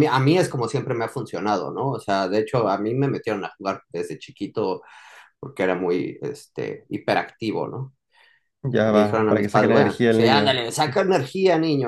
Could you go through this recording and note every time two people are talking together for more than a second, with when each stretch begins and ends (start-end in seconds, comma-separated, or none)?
8.8-10.6